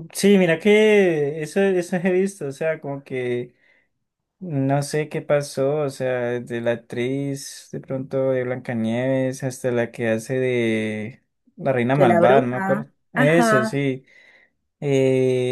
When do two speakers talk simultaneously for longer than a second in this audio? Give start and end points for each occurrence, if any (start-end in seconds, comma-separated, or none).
12.0-13.8